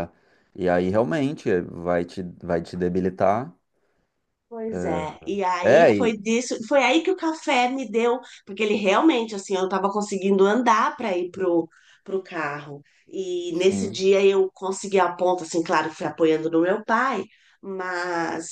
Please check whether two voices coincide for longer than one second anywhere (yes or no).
no